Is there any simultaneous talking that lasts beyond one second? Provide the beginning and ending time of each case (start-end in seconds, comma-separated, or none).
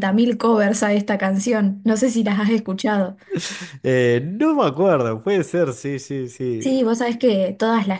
none